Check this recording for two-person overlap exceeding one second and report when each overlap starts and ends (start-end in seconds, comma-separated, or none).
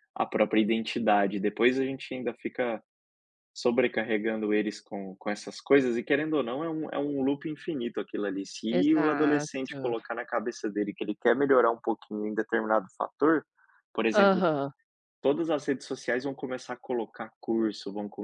8.7-9.9